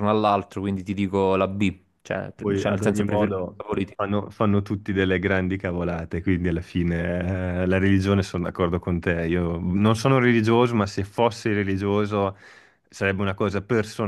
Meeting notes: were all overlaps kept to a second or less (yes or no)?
no